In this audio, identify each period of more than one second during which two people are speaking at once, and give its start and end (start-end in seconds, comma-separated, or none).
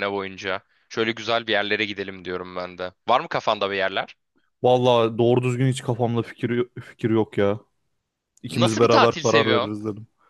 8.5-9.7